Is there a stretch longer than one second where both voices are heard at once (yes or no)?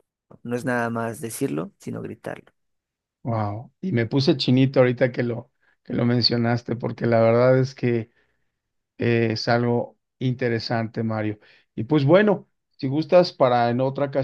no